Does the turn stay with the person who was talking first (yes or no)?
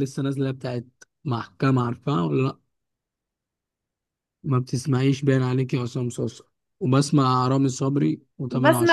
no